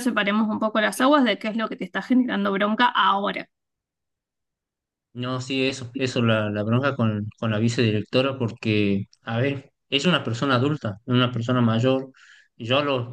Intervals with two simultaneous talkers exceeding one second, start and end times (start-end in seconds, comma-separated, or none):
none